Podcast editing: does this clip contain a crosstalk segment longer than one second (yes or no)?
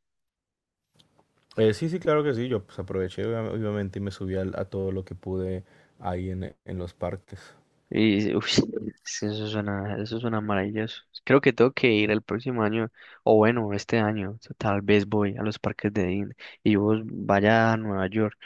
no